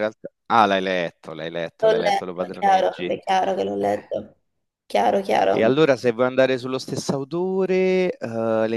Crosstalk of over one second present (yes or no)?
yes